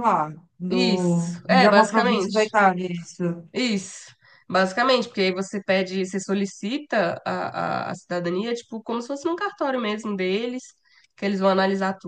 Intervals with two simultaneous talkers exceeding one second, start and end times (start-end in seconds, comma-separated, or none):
0.7-2.4